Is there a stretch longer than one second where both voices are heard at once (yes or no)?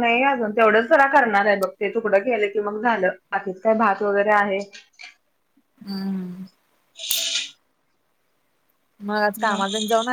no